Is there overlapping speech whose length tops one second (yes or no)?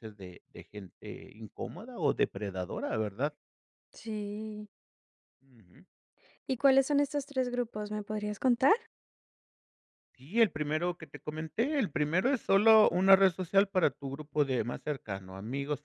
no